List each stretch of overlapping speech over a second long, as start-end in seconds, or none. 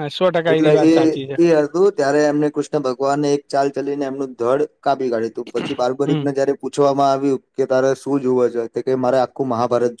none